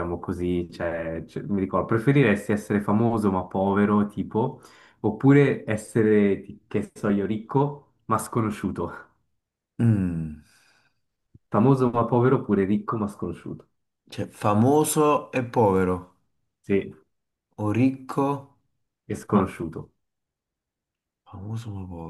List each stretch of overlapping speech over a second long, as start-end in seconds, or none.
none